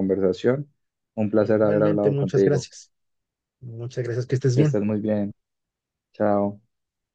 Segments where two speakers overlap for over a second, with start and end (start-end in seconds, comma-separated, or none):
1.4-2.7